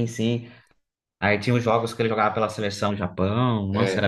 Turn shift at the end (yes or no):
yes